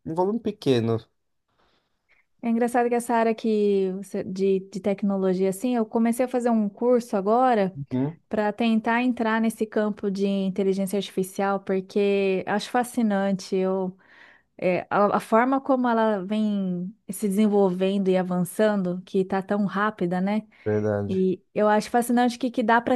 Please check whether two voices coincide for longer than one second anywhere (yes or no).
no